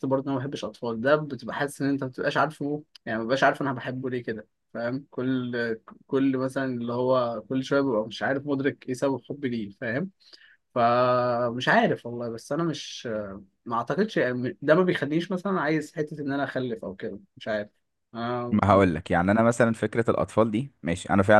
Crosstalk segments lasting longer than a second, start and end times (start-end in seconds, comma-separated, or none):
none